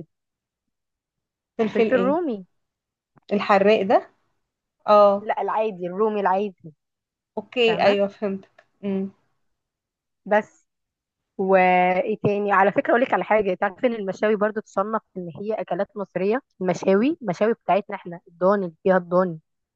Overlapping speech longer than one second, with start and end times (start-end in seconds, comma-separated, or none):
none